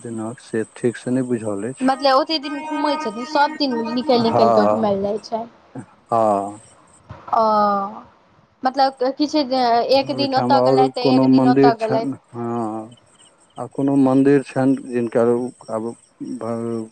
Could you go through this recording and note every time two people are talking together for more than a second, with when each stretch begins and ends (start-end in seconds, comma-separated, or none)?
10.1-12.1